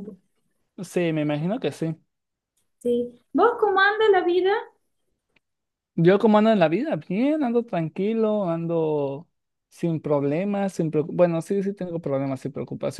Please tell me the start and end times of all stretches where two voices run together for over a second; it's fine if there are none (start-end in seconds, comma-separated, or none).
none